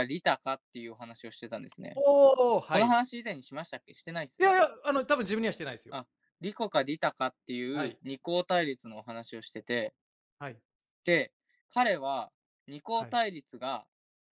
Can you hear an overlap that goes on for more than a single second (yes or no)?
no